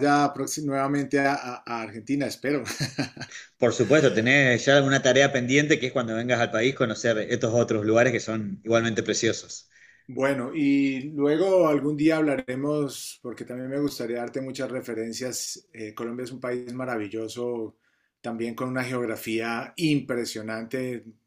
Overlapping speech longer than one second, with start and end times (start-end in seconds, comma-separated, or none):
none